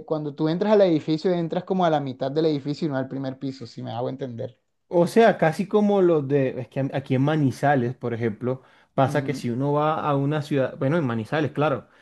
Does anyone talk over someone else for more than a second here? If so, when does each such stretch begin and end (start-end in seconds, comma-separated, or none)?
none